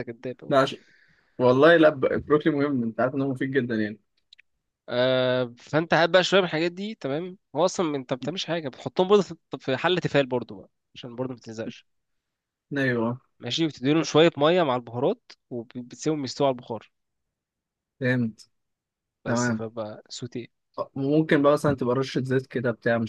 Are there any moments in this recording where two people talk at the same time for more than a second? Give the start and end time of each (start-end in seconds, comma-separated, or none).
none